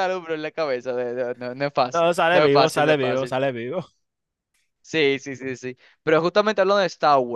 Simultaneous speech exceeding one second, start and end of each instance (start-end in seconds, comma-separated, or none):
1.9-3.4